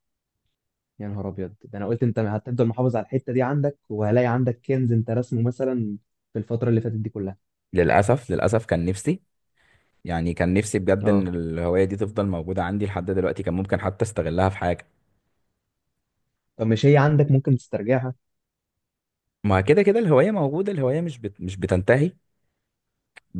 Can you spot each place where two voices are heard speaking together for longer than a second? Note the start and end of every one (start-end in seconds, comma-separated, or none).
none